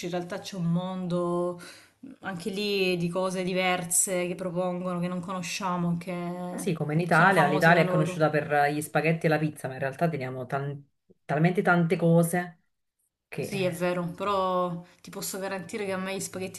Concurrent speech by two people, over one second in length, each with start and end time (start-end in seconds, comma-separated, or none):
6.5-8.3